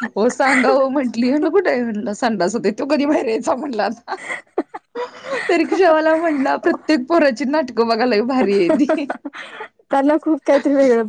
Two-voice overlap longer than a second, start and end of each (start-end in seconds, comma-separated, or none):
none